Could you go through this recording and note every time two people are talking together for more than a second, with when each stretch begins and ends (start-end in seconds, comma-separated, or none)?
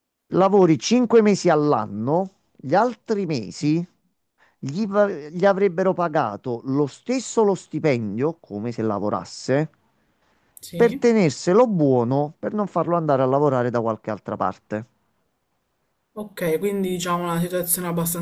none